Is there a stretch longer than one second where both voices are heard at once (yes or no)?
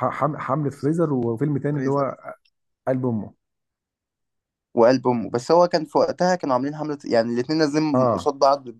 no